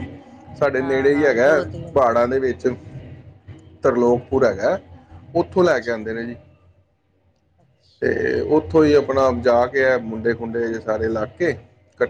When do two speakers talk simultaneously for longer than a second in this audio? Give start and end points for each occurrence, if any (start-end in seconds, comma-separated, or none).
0.8-2.6